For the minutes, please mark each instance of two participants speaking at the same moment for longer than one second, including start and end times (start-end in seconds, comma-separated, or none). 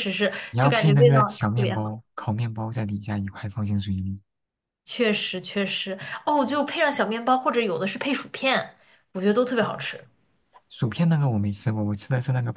0.5-1.9